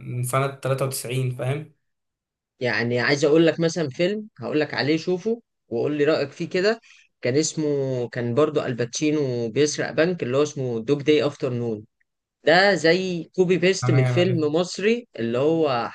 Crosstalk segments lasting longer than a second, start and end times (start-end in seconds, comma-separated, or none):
none